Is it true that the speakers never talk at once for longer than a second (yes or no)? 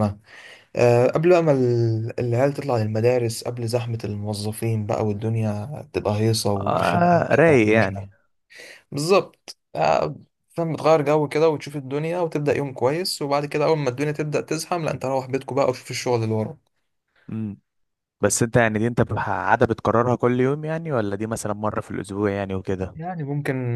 no